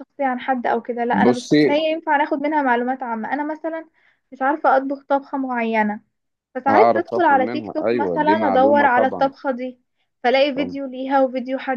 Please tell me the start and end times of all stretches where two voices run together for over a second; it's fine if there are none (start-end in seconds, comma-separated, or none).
6.7-9.3